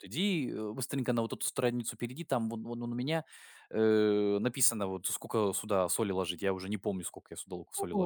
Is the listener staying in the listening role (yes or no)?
no